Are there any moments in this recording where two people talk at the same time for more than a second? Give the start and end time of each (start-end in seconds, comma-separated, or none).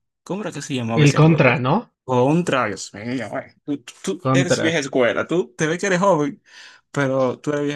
none